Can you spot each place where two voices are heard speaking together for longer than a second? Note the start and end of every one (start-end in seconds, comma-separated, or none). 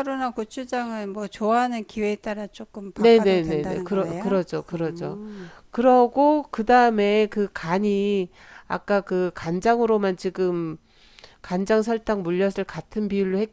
3.0-5.2